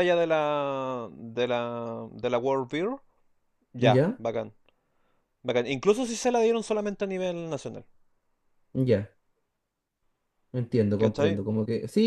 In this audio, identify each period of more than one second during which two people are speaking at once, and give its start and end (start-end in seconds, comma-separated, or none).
none